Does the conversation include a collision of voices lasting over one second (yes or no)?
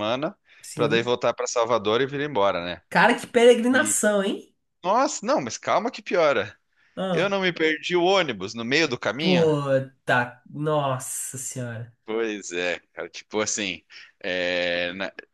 no